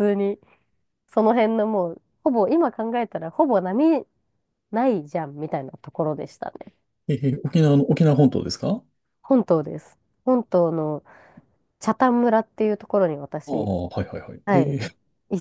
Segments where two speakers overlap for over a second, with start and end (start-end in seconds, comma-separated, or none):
none